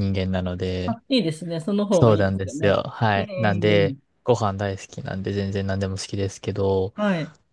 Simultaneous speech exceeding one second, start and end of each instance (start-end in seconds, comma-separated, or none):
1.9-4.0